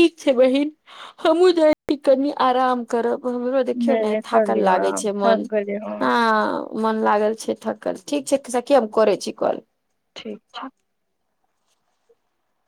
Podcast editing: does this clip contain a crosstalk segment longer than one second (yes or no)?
yes